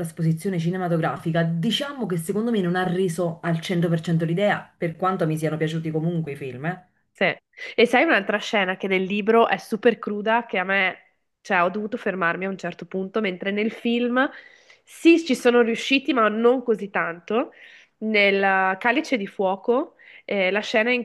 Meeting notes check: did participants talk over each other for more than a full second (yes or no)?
no